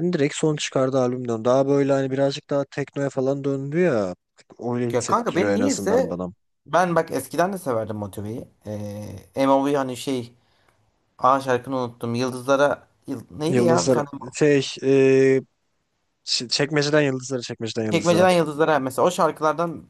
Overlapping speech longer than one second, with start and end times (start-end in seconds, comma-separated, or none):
4.9-6.2